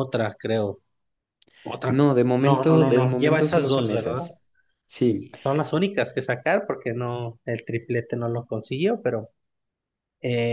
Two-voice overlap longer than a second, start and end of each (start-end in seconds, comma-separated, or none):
1.9-4.2